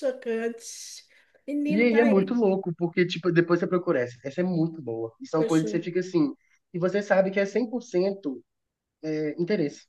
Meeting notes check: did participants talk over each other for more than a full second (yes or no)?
no